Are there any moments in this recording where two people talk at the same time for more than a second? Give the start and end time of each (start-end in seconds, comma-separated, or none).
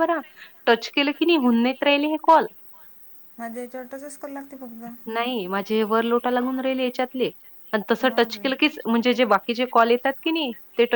none